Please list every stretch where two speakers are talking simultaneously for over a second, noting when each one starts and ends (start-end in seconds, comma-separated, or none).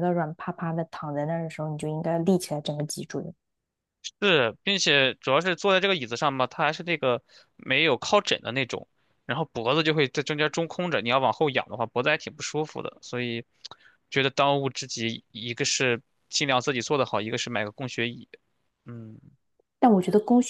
none